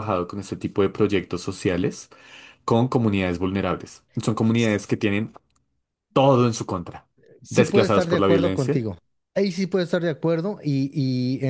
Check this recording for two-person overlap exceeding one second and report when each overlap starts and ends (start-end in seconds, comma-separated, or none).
7.5-8.8